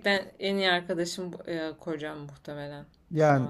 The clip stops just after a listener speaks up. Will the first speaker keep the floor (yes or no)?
no